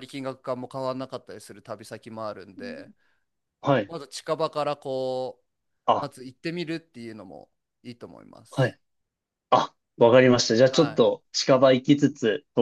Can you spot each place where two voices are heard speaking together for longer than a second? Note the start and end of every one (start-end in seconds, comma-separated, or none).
none